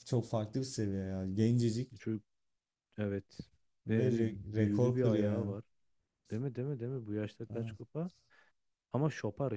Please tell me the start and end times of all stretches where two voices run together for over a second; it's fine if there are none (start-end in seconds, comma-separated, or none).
3.9-5.5